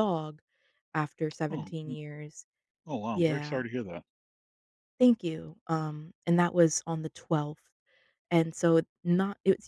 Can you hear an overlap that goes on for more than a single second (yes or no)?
no